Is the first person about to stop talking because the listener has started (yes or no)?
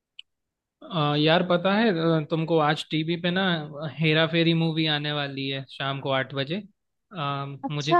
no